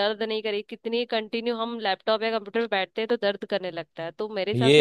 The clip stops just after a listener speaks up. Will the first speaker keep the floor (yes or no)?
no